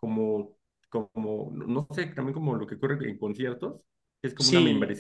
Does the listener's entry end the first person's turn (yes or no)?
no